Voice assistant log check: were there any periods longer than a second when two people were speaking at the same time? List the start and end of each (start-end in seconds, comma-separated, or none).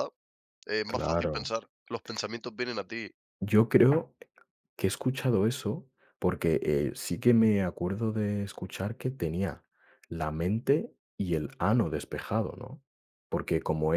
none